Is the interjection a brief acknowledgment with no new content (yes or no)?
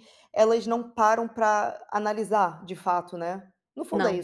yes